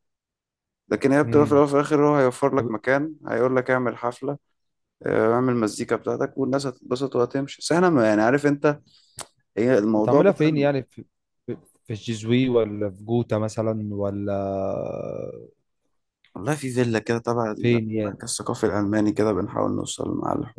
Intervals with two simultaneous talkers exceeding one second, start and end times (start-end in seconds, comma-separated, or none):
none